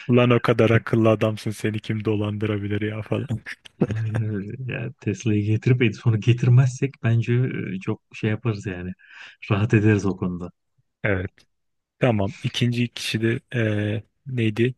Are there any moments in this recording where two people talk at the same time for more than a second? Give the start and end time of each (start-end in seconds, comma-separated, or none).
none